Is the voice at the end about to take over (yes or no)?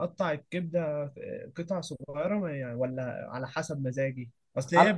no